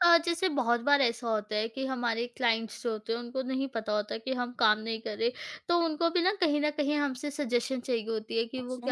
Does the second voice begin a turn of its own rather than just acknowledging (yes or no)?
no